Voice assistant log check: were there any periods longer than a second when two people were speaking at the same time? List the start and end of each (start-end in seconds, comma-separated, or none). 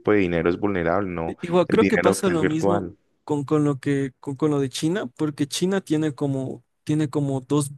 1.2-2.9